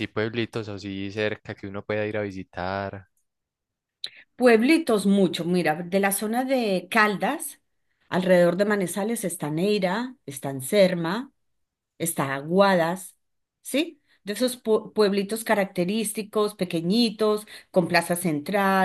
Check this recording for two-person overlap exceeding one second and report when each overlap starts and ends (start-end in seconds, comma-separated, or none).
none